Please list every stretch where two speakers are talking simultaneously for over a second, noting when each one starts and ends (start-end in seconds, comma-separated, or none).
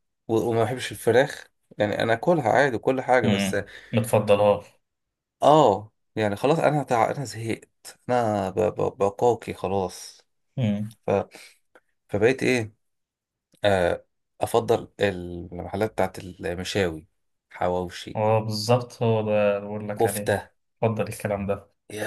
none